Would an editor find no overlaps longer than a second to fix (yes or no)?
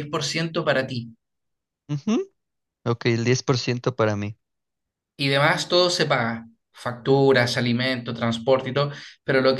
yes